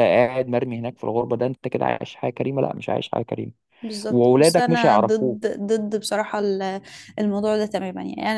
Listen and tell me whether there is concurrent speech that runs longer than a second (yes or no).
yes